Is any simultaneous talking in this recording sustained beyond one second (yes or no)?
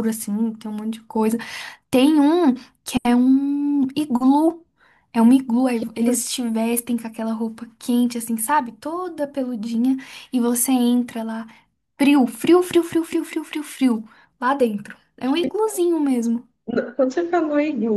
no